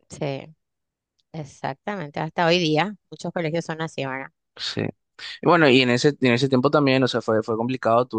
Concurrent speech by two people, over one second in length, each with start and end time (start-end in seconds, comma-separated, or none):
none